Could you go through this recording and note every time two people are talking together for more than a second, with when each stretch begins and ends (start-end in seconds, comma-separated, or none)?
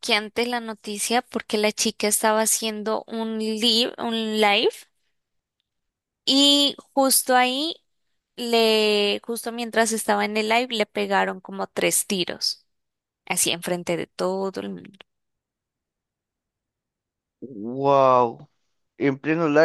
none